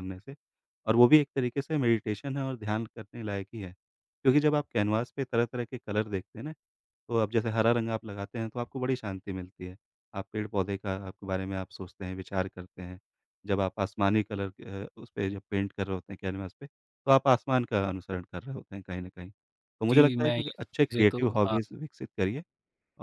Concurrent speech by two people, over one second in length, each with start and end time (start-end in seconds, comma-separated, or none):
19.9-21.6